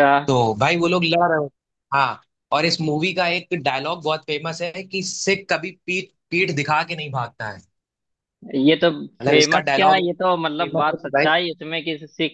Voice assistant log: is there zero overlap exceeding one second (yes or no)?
no